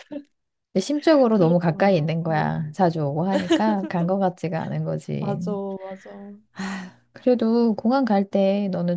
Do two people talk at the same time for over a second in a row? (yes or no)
yes